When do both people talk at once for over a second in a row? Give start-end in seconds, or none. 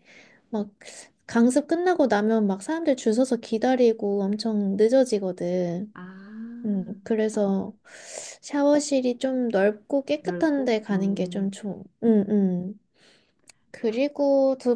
10.2-11.5